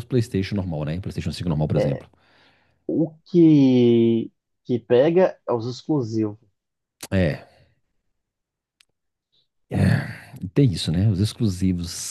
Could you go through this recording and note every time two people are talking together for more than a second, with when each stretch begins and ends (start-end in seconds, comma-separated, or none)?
none